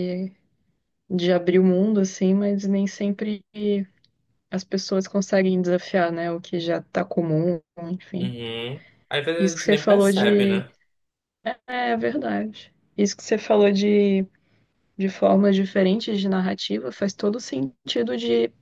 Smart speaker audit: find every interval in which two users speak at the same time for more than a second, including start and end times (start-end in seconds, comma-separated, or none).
9.4-10.6